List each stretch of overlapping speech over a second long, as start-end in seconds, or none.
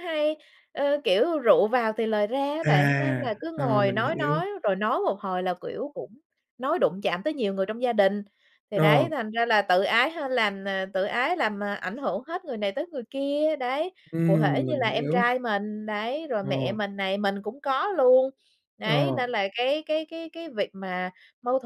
2.6-4.4, 14.1-15.3